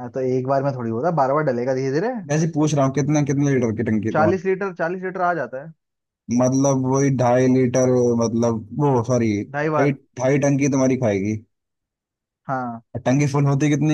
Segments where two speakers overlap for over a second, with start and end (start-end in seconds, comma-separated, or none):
none